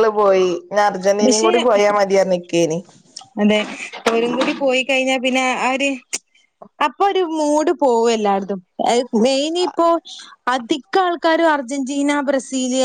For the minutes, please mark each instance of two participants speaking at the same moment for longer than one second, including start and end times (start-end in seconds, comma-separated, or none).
none